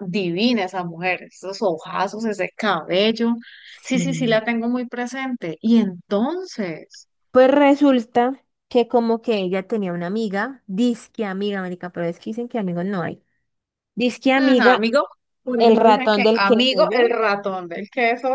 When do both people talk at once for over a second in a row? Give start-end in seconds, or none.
15.6-17.1